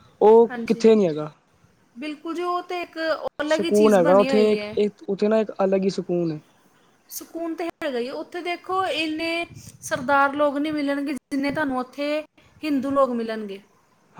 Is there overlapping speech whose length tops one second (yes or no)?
yes